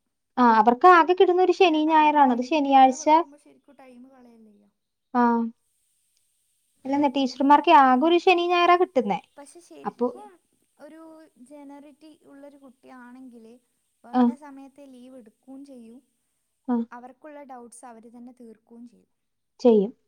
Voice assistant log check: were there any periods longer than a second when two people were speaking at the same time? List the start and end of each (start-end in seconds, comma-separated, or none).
1.6-3.2